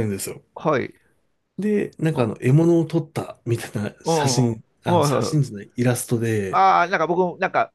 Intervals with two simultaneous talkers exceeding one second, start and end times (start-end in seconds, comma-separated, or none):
4.0-5.6